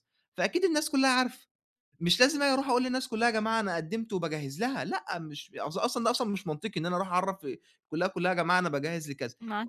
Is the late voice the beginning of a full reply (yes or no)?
no